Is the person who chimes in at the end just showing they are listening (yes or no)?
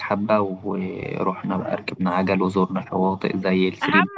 no